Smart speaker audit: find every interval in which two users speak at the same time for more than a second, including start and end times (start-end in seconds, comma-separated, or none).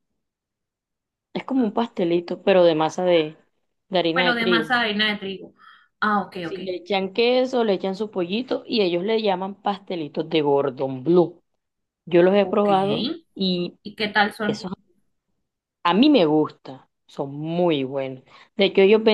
none